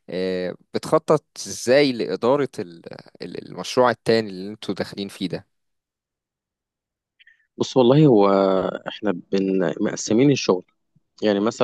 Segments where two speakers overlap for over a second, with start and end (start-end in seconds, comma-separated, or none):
none